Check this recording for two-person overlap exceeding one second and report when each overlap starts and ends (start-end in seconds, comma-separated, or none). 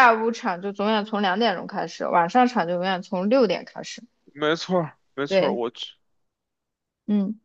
none